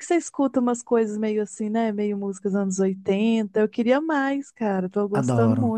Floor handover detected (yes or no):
yes